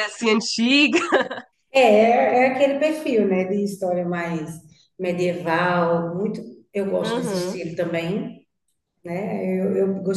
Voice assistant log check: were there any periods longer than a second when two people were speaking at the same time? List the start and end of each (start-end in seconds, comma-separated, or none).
none